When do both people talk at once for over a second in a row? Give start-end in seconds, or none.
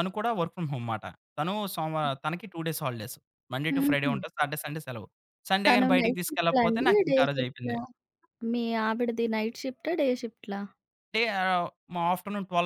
5.7-7.8